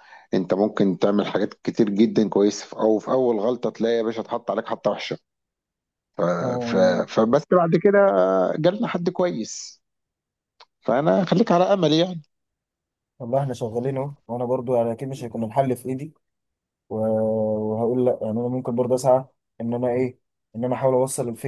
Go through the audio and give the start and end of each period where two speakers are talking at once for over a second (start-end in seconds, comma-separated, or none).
none